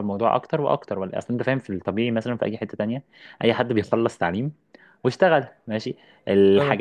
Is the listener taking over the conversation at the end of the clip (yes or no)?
no